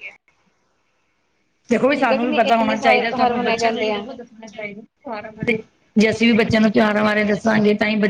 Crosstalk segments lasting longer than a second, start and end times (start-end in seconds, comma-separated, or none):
1.9-4.1